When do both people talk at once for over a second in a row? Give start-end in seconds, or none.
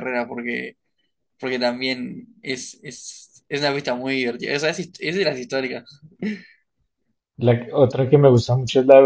none